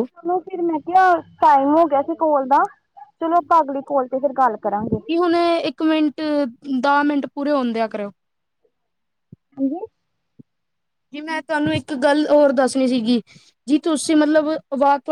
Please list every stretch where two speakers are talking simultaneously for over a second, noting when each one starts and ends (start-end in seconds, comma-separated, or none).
none